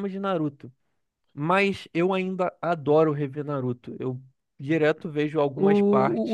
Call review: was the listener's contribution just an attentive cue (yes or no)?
no